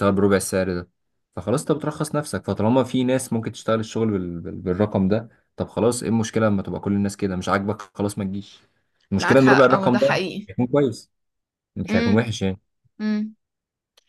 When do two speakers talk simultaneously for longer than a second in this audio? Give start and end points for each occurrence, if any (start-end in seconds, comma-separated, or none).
9.2-10.5